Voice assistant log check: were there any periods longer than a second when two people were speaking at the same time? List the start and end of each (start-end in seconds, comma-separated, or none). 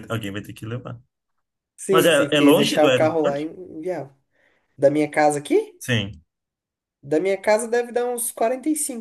1.9-3.4